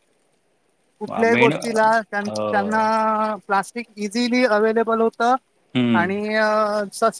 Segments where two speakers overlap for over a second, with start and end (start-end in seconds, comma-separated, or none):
1.3-2.6